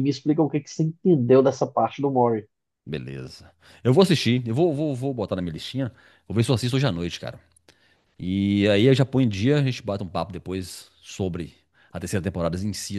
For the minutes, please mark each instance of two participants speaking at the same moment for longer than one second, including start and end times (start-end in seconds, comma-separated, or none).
none